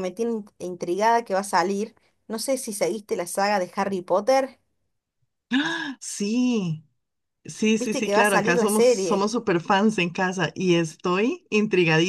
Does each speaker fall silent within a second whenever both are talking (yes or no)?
no